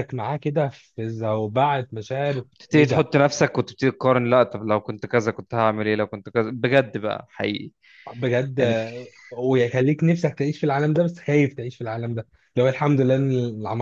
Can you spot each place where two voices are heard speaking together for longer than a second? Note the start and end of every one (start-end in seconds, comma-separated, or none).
none